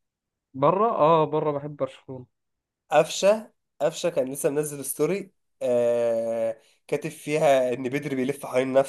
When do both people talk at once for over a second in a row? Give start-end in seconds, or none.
none